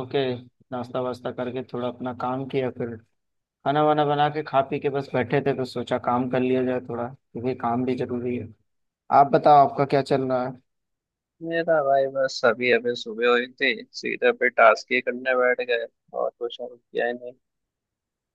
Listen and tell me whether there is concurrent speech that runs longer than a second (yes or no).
no